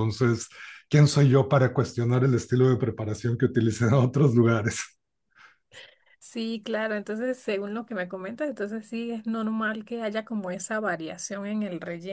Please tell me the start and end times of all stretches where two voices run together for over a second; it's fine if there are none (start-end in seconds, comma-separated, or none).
none